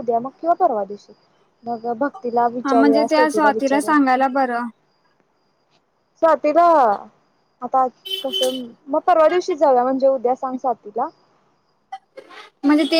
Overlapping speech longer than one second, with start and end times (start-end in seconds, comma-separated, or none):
2.6-4.0